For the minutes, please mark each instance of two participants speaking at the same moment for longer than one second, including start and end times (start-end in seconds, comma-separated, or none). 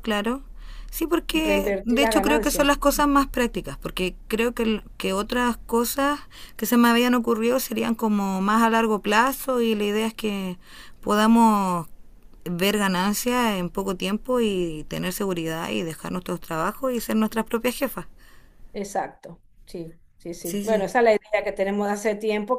1.3-2.7